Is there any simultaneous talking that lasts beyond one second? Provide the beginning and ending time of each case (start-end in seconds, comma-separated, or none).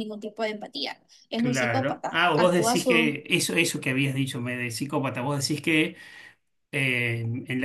1.4-3.2